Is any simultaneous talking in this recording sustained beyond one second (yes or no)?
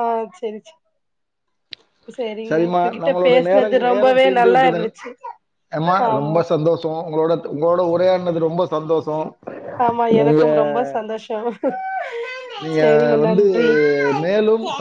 yes